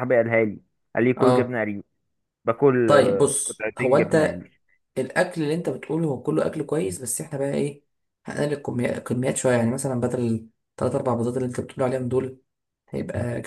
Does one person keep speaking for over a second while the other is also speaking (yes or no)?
yes